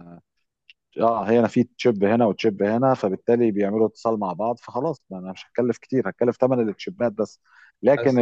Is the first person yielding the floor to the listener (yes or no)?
no